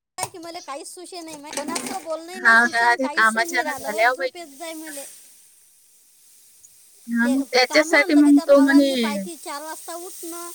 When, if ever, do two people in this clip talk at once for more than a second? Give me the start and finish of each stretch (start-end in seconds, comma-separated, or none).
2.4-4.9, 7.2-9.2